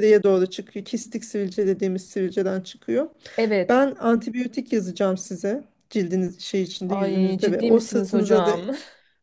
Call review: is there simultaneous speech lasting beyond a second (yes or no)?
yes